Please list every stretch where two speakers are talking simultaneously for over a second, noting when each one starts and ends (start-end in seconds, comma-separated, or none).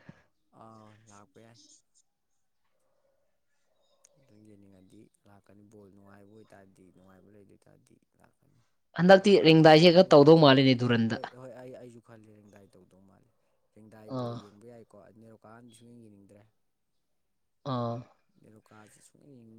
9.1-11.2